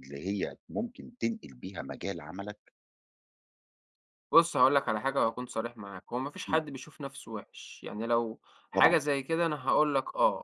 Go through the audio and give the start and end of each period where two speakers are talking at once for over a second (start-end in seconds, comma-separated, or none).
none